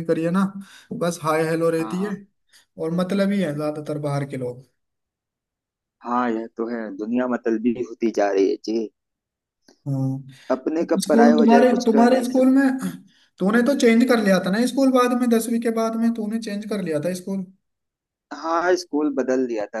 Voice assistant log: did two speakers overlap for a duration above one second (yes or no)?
yes